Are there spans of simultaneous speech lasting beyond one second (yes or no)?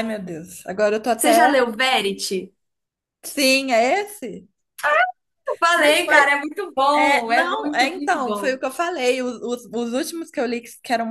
yes